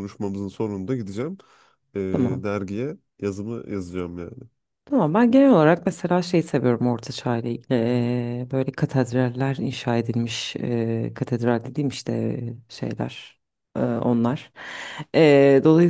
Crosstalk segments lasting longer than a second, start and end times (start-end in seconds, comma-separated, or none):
none